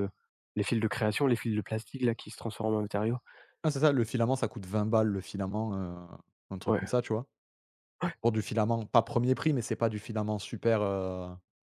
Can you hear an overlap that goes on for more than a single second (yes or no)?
no